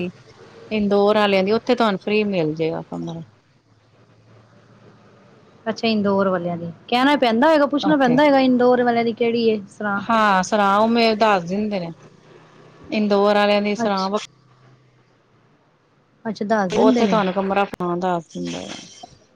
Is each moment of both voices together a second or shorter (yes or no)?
yes